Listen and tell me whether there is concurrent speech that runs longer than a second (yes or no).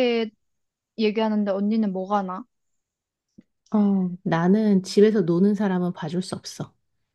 no